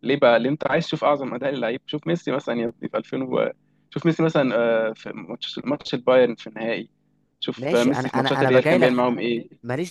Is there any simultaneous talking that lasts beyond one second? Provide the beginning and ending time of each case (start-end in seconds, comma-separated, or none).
7.6-9.0